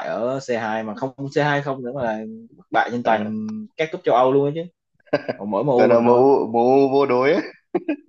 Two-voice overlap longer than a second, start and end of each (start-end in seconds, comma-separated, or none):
none